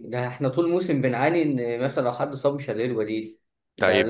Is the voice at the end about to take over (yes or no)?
yes